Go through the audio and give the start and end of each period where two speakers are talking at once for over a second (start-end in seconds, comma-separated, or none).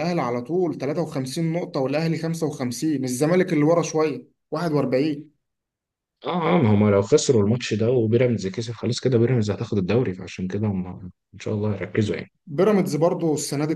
none